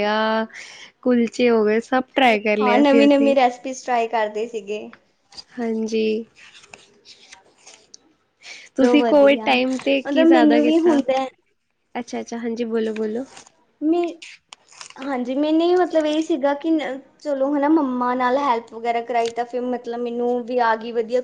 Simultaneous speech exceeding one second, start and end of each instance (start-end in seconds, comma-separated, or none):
8.8-11.0